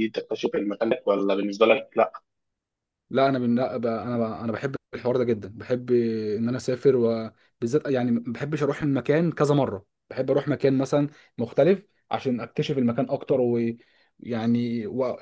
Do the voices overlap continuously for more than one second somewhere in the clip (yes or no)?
no